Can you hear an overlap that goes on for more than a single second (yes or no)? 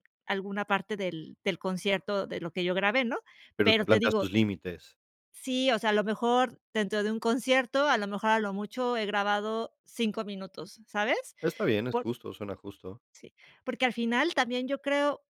no